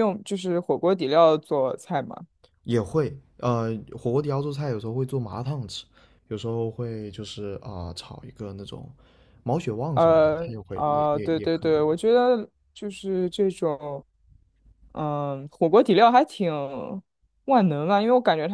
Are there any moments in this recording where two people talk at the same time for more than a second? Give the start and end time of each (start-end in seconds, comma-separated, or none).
9.9-11.8